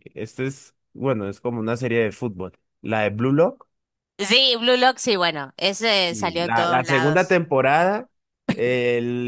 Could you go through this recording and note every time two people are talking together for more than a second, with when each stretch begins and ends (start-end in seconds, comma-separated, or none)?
6.1-7.4